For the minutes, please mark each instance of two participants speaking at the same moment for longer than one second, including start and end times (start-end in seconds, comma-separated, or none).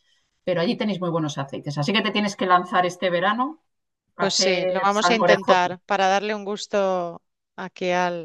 4.2-5.7